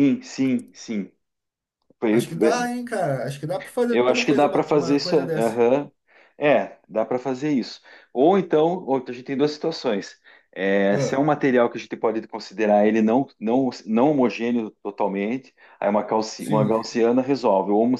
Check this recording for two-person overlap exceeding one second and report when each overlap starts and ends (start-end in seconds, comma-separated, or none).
3.9-5.6